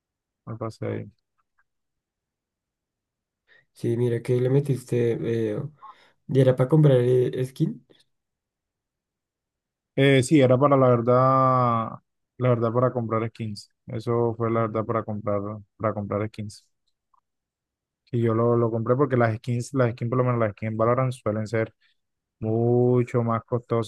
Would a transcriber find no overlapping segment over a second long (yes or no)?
yes